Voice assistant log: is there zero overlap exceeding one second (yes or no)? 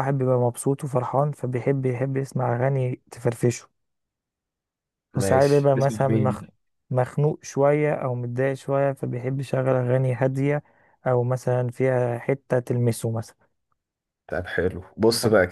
no